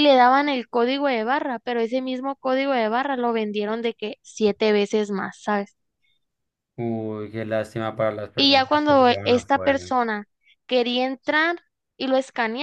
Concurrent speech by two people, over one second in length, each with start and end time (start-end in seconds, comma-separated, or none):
8.3-9.9